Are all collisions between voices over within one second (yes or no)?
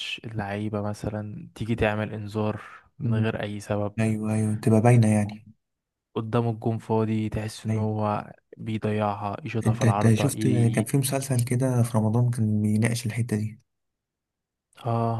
no